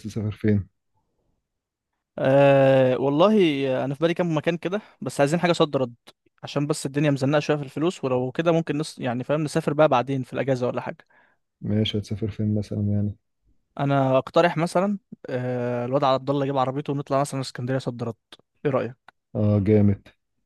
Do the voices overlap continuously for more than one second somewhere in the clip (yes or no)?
no